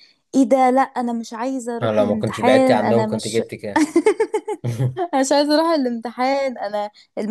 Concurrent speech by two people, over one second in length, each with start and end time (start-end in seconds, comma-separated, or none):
1.8-3.4